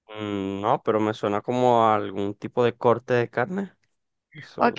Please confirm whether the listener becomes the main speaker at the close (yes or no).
yes